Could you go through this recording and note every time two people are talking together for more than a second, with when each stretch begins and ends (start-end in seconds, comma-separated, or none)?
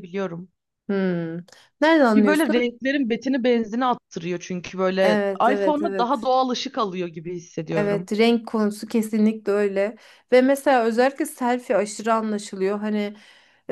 5.0-6.3